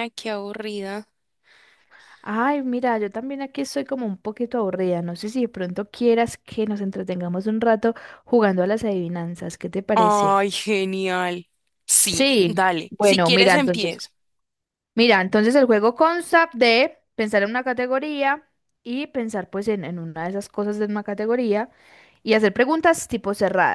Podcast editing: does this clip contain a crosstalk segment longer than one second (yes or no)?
yes